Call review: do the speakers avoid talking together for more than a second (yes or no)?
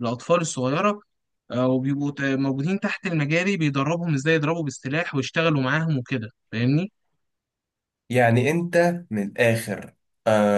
yes